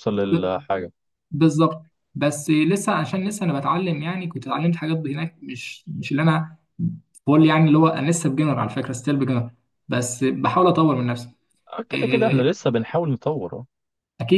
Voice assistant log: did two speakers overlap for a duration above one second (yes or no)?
no